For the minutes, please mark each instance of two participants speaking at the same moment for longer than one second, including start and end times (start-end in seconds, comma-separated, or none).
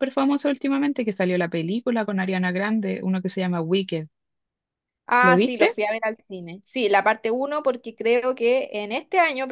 none